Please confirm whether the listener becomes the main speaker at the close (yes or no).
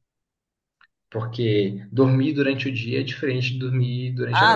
yes